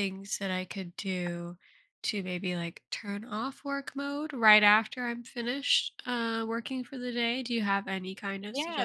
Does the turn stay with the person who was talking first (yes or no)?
no